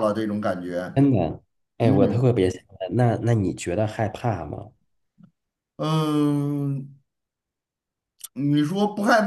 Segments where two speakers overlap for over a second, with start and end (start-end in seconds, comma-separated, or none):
none